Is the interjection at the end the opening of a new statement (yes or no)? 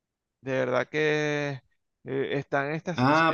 yes